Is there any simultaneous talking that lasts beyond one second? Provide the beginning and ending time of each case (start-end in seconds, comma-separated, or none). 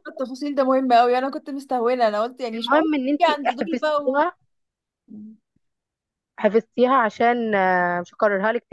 2.5-4.2